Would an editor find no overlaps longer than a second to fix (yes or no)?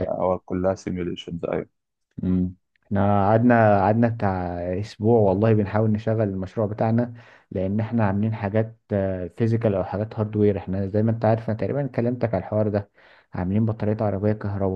yes